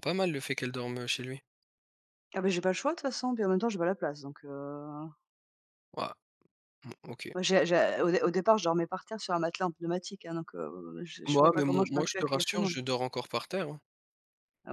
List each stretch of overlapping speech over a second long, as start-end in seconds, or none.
11.2-12.8